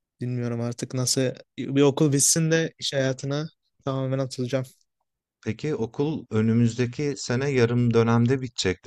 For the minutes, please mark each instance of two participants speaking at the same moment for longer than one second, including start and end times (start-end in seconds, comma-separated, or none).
none